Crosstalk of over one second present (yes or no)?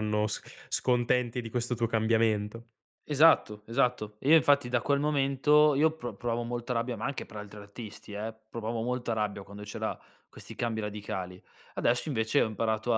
no